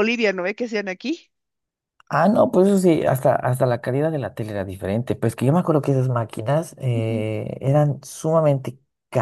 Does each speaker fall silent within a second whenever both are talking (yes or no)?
yes